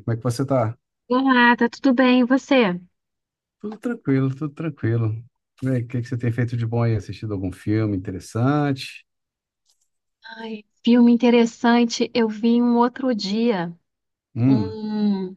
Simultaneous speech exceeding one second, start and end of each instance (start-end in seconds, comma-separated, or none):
none